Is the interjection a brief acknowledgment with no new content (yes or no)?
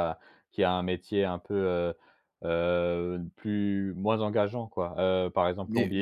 yes